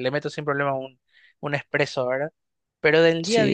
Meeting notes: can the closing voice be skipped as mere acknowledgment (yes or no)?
yes